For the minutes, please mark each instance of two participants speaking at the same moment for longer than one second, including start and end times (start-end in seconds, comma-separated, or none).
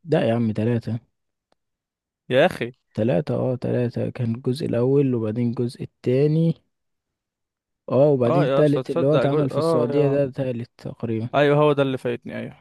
8.3-10.2